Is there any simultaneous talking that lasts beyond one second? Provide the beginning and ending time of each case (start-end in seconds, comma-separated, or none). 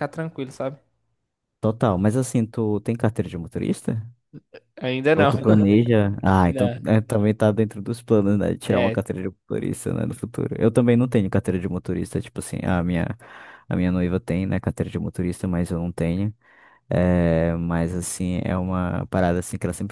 none